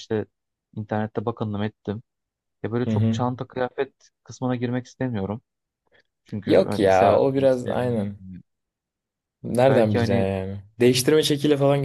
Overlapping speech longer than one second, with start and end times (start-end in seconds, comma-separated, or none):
6.5-8.2